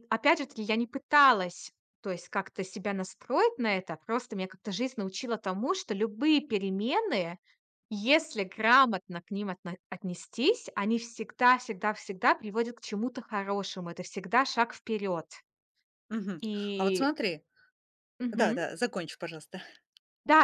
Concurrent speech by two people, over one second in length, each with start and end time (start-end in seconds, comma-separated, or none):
none